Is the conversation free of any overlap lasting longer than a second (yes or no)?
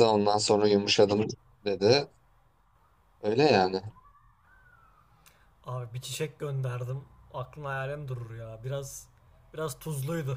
yes